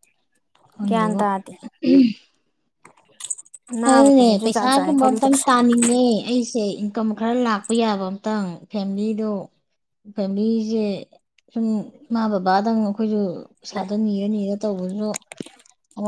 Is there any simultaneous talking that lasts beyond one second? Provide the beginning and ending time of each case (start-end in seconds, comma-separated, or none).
3.9-5.3